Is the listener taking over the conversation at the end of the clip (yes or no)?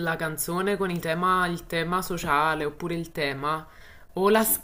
no